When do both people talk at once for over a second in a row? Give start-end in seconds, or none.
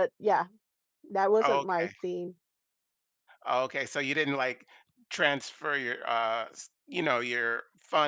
none